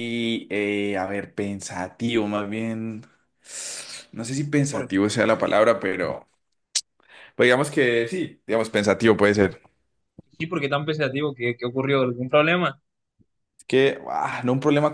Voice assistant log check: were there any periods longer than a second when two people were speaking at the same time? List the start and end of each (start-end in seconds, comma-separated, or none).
none